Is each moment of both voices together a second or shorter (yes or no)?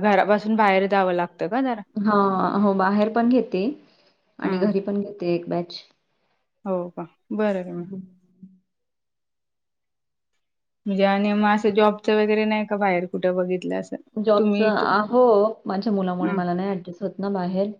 yes